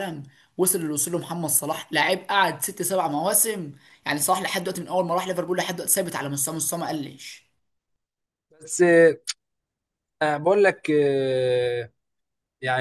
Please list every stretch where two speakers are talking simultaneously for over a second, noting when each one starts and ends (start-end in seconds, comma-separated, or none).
none